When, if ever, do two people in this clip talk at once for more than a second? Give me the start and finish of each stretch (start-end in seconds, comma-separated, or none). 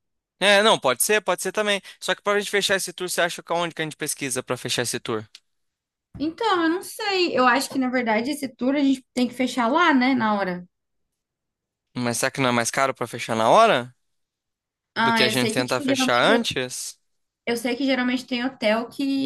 15.0-16.5